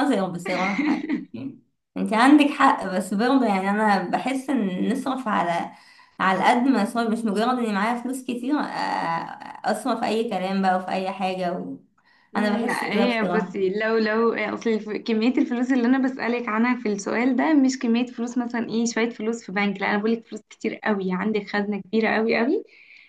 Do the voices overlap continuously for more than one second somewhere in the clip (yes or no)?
yes